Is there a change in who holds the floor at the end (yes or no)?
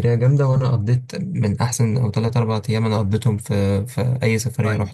yes